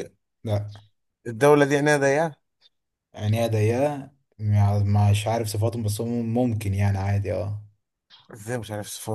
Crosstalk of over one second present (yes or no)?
no